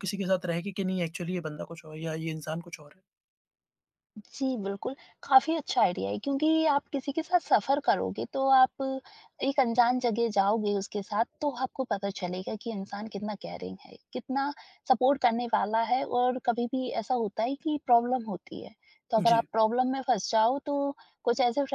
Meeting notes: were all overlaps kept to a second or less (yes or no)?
yes